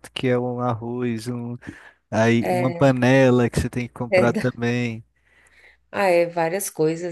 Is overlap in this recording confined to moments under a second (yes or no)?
yes